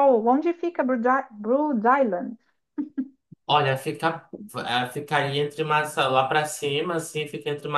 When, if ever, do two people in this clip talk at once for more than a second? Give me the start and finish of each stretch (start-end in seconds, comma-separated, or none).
none